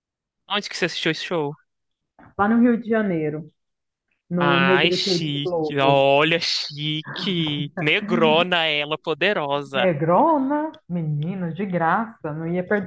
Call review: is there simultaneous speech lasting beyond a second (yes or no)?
yes